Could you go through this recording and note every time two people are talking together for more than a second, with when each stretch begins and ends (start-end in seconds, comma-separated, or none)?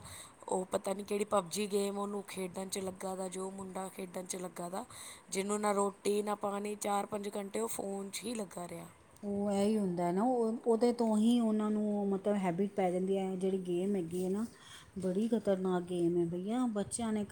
none